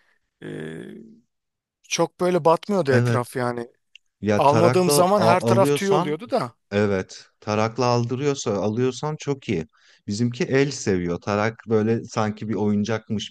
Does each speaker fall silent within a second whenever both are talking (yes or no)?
no